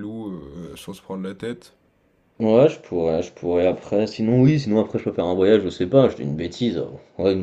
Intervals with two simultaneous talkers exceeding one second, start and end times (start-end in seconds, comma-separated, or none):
none